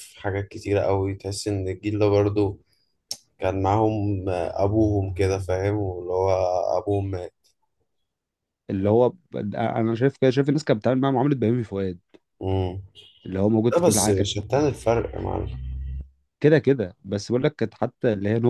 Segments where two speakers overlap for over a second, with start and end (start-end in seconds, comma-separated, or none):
none